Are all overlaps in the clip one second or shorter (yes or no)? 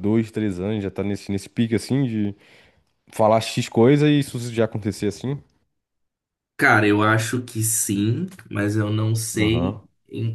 yes